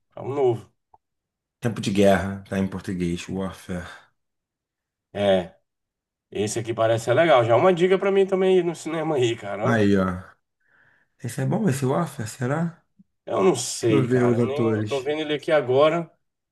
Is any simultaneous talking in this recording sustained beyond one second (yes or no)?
yes